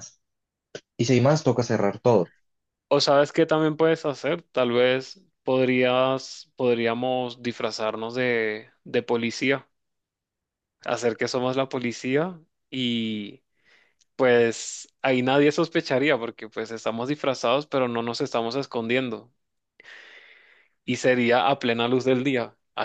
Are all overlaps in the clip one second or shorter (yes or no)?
yes